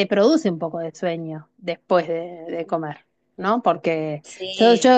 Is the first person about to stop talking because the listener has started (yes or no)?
no